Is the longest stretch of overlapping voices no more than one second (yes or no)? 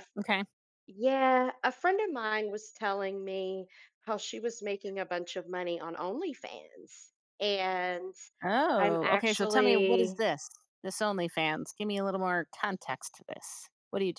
no